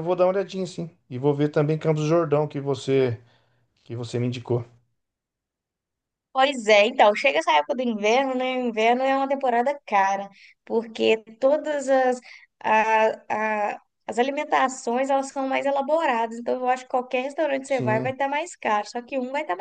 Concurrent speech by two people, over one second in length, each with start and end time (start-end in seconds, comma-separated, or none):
none